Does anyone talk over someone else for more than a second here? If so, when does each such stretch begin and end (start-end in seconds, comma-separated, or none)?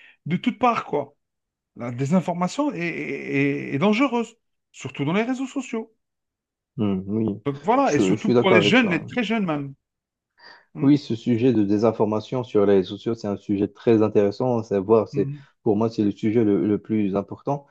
7.8-9.2